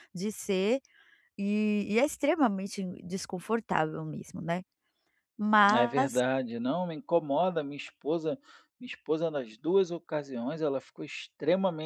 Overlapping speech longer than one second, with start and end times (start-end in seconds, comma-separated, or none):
none